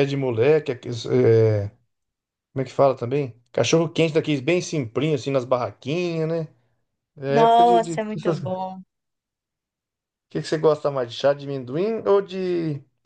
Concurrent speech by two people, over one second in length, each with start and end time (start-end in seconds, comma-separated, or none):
7.3-8.6